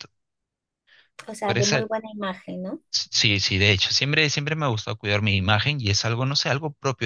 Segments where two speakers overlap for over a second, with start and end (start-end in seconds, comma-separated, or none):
none